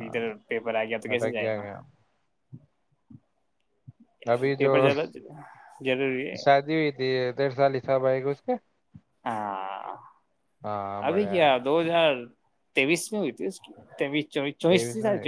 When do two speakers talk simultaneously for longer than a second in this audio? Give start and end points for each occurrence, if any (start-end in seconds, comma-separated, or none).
none